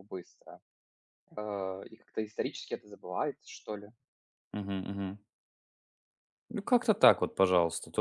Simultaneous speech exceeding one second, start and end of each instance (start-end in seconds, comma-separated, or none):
none